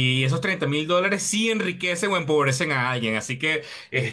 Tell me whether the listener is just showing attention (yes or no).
yes